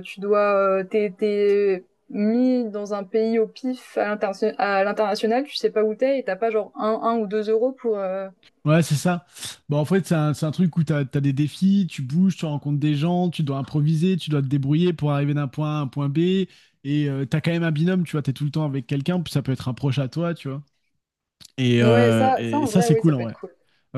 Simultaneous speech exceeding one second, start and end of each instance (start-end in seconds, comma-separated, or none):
21.8-23.4